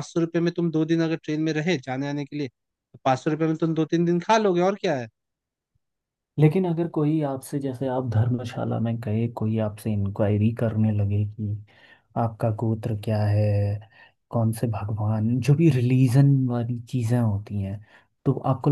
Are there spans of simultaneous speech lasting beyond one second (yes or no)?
no